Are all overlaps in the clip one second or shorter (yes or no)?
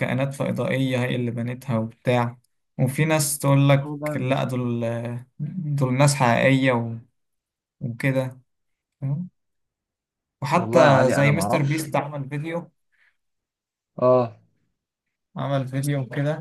no